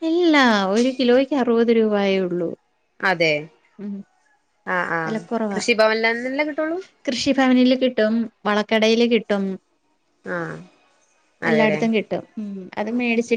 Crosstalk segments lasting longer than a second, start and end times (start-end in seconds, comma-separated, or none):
none